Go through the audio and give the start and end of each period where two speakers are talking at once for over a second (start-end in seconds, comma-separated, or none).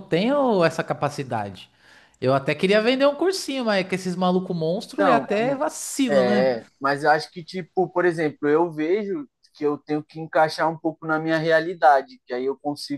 none